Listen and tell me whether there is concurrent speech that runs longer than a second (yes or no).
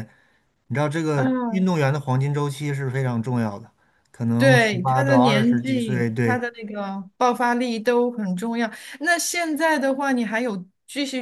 yes